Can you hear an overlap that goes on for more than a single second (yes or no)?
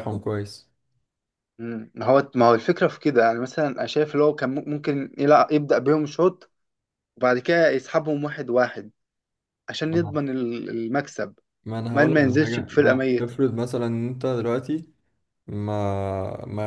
yes